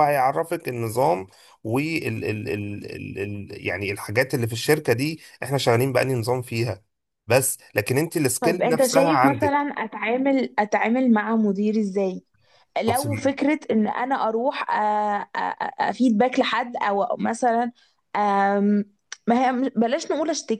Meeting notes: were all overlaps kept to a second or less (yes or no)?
no